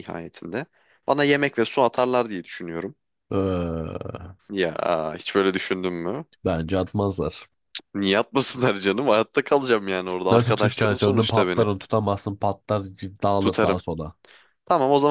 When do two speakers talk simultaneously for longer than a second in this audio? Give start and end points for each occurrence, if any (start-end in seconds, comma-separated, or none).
10.3-11.7